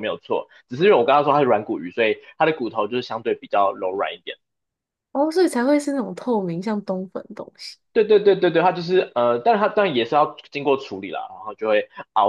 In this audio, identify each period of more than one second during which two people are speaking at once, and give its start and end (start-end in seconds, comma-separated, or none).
none